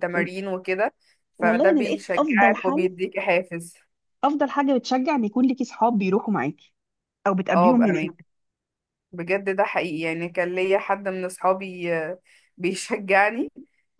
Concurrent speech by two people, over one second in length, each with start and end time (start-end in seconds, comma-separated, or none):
1.4-2.9